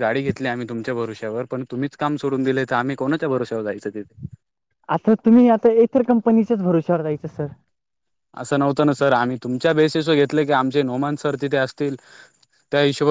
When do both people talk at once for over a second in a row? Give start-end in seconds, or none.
none